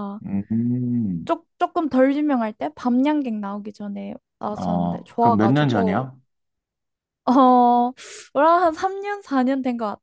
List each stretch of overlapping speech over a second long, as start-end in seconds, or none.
4.6-6.1